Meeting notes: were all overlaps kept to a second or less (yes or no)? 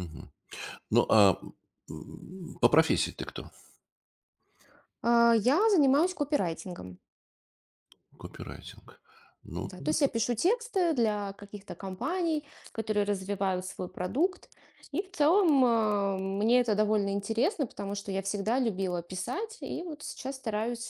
yes